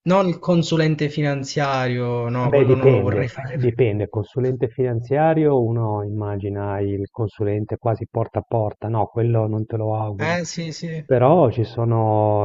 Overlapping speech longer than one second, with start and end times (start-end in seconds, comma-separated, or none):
2.5-3.8